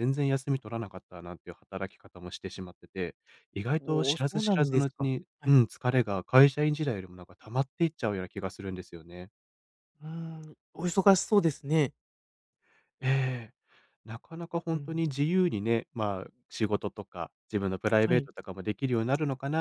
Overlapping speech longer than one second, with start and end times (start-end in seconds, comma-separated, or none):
3.8-5.6